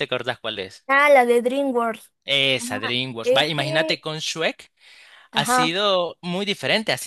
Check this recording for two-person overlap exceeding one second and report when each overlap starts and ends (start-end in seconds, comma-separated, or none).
2.6-4.0